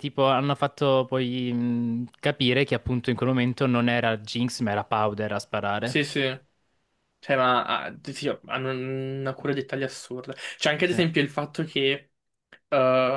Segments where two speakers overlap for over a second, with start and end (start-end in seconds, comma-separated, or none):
none